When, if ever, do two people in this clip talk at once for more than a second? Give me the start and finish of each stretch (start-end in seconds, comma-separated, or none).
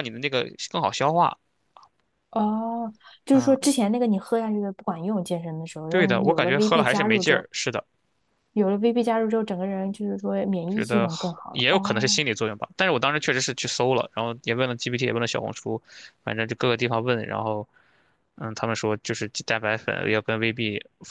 5.9-7.5, 10.7-12.2